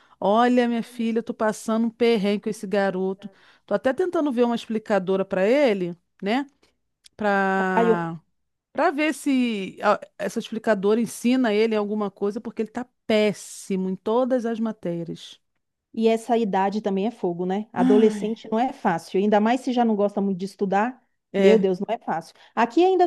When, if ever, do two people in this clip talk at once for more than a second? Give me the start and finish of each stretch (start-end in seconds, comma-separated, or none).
none